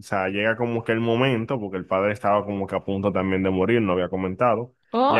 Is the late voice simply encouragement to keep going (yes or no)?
no